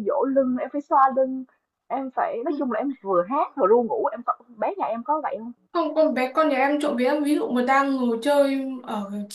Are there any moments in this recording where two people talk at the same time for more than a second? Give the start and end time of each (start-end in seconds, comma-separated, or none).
none